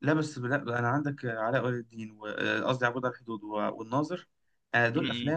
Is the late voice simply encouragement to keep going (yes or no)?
yes